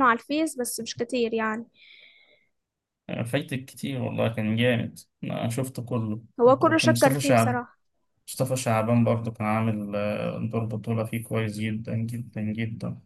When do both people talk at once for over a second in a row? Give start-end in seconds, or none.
6.4-7.6